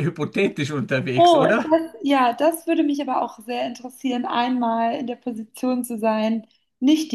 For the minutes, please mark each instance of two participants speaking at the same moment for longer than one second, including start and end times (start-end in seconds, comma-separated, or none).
none